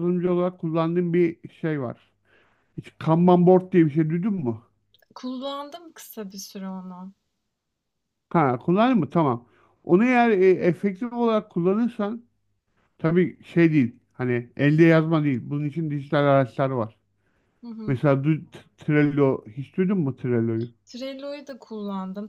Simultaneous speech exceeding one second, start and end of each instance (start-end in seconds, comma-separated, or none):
none